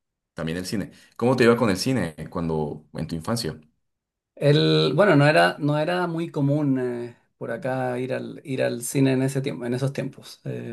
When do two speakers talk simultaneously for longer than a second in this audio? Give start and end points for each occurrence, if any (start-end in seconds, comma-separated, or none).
none